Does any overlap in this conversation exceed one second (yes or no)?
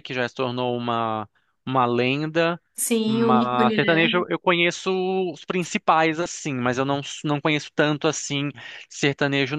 yes